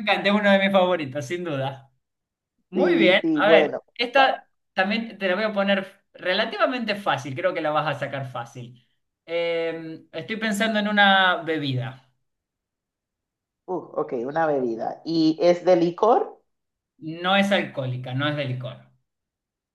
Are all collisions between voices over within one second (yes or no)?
no